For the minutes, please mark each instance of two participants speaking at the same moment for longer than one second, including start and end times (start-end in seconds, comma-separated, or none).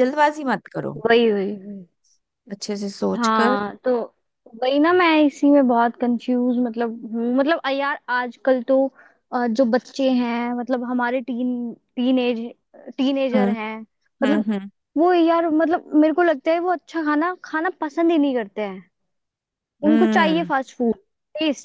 none